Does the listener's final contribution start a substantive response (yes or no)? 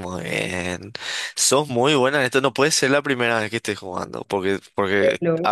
no